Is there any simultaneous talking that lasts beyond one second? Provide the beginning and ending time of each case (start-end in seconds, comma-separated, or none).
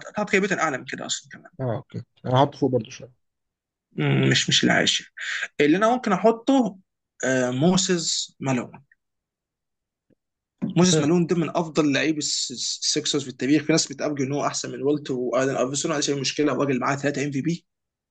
none